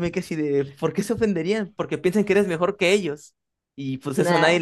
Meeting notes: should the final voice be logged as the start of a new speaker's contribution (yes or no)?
no